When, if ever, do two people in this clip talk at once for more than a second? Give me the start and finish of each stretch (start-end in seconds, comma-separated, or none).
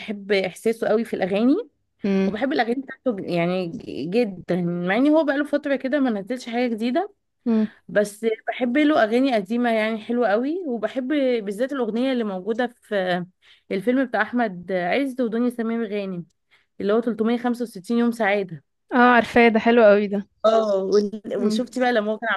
none